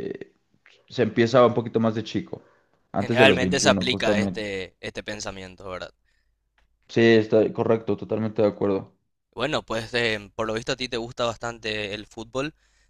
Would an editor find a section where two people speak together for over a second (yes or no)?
yes